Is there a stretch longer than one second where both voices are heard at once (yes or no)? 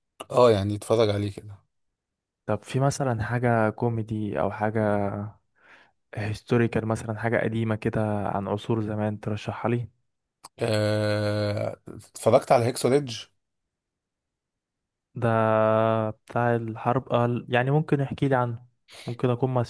no